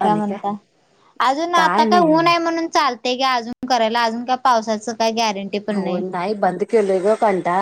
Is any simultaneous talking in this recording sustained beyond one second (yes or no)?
no